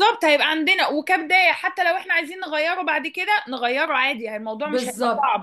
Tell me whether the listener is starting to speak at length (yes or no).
yes